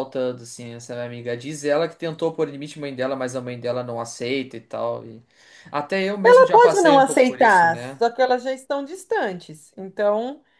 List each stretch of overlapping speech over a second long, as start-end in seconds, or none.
6.2-8.0